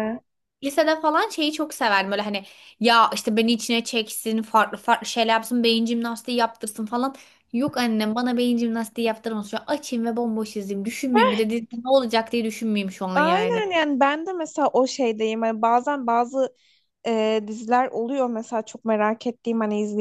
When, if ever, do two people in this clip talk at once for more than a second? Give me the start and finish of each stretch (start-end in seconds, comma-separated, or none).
none